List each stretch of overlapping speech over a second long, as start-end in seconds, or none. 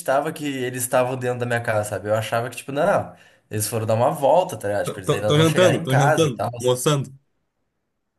4.8-6.5